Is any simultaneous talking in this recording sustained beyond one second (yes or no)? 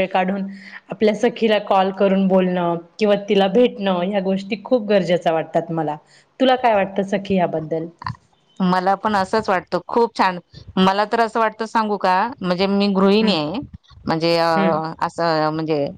no